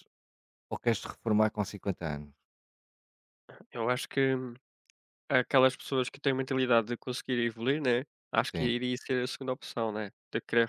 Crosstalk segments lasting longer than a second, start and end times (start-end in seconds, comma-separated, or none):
none